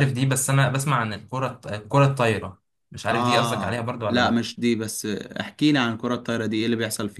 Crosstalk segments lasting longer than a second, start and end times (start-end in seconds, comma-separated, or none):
3.1-4.5